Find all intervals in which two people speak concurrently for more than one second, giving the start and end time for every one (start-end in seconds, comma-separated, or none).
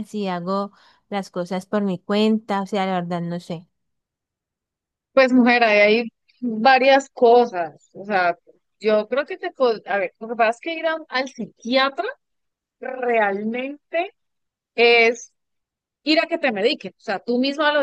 none